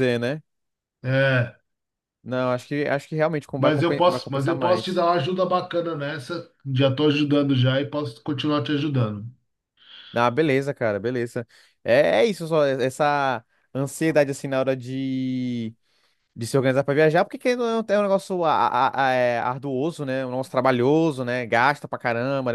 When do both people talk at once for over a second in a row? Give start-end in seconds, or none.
3.6-5.1